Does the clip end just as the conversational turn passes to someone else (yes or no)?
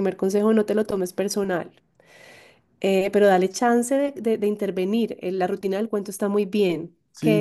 yes